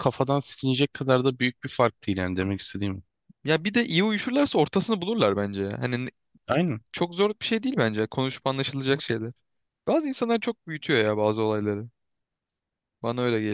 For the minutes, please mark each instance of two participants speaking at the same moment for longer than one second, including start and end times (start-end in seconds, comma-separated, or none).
none